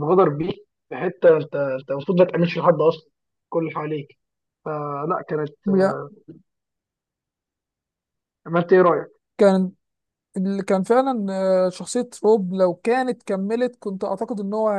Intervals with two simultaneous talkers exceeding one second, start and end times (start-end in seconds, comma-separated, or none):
none